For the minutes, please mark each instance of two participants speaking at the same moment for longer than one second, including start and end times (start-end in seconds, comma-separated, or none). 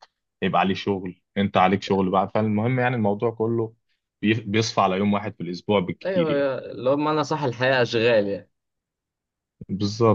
none